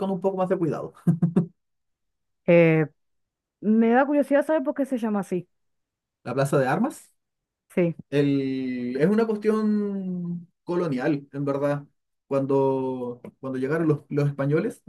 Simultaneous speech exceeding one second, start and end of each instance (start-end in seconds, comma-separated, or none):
none